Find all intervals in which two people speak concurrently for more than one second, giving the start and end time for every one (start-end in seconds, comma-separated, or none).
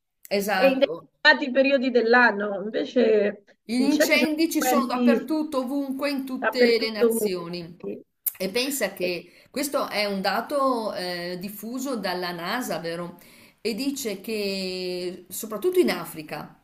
3.7-5.3, 6.4-7.8